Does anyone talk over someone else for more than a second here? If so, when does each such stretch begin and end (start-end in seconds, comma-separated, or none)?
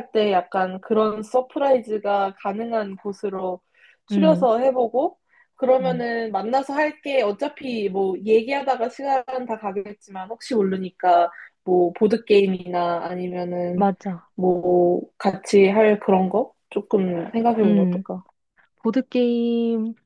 none